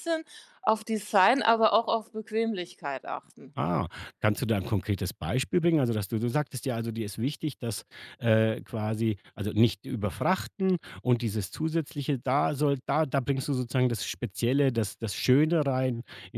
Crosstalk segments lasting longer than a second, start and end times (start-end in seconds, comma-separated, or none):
none